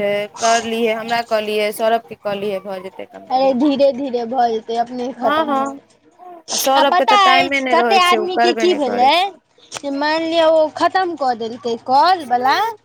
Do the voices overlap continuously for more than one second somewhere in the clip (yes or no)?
yes